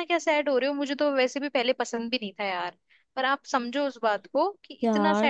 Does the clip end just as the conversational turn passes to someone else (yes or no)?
yes